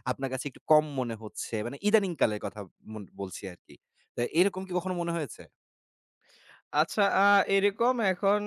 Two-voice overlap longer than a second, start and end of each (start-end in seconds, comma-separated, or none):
none